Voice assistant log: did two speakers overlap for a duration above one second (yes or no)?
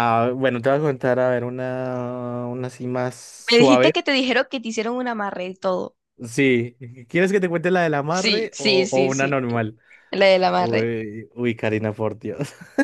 yes